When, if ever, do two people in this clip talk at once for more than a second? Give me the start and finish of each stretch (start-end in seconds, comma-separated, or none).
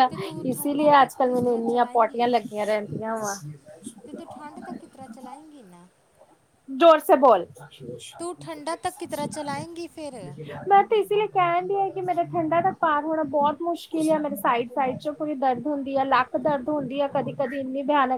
0.5-2.3